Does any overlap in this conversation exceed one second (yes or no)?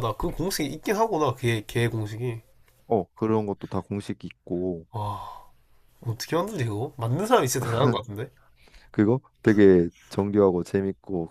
no